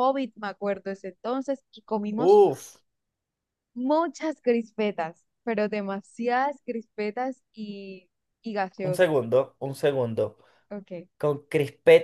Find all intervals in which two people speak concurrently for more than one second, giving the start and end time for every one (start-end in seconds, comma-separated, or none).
none